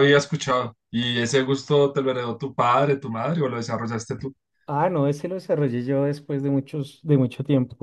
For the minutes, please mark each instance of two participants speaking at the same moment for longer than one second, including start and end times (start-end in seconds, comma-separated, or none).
none